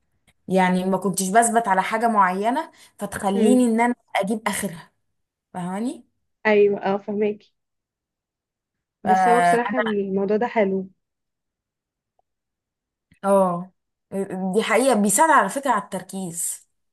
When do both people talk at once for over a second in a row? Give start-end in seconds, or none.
none